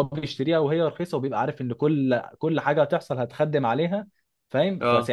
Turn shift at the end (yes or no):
no